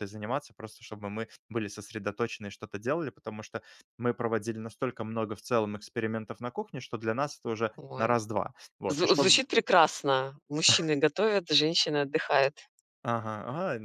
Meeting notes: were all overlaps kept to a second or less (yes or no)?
yes